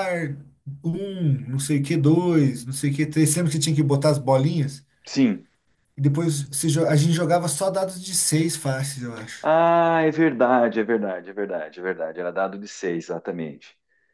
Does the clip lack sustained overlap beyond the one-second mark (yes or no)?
yes